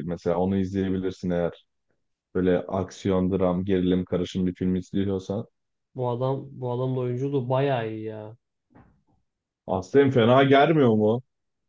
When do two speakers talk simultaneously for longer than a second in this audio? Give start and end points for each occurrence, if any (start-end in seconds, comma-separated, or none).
none